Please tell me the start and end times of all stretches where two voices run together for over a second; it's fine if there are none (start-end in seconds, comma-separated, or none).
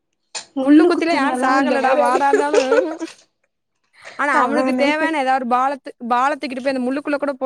0.6-2.4